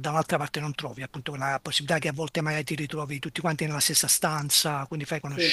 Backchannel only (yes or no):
yes